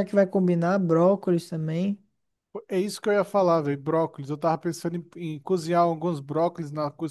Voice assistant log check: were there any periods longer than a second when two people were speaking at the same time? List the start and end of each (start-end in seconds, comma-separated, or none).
none